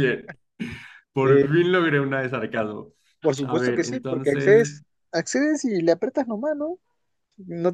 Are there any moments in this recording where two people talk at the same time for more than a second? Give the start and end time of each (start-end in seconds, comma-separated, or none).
3.4-4.8